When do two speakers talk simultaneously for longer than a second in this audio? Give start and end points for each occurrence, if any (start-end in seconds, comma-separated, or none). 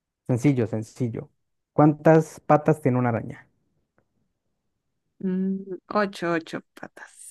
none